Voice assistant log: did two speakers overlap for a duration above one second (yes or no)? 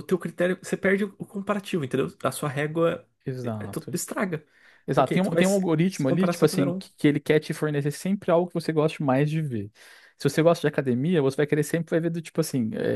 yes